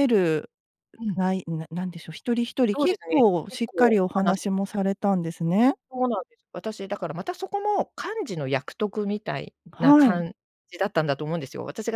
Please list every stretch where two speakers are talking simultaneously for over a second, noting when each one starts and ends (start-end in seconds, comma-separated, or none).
2.7-4.8